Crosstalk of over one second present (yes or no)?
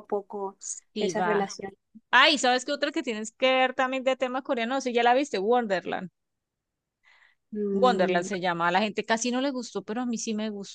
no